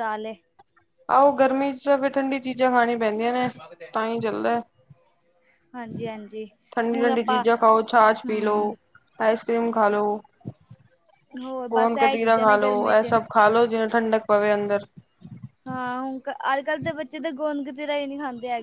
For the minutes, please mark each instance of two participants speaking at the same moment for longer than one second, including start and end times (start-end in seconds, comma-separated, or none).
11.7-13.1